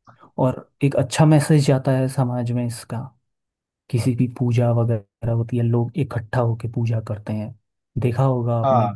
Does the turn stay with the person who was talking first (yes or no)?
yes